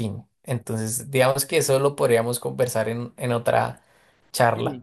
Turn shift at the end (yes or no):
yes